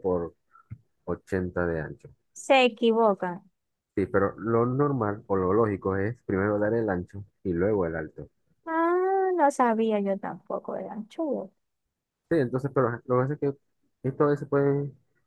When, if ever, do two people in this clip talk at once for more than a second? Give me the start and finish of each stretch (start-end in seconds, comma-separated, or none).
none